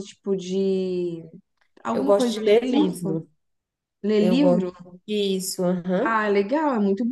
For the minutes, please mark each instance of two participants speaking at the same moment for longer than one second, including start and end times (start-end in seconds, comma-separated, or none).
1.9-3.2